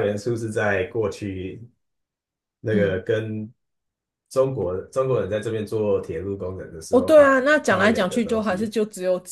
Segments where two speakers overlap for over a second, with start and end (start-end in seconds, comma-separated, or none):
6.9-8.8